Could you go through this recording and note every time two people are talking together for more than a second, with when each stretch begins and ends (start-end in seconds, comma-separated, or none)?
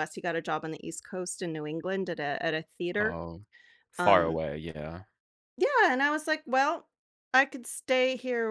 none